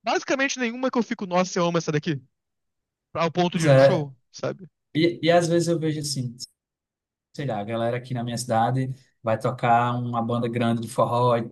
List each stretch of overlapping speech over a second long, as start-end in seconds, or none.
none